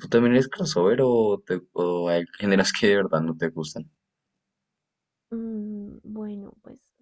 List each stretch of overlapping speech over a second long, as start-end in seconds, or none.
none